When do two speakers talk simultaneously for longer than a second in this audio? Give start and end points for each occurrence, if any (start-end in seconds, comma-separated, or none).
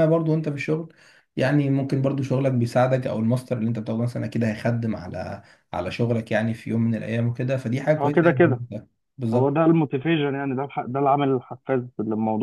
none